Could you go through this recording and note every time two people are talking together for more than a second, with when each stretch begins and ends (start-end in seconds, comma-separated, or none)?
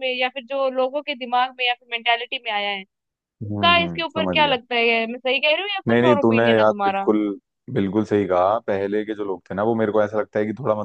none